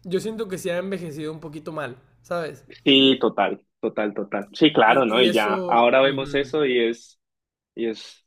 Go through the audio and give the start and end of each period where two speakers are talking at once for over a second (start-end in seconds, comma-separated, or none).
4.8-6.5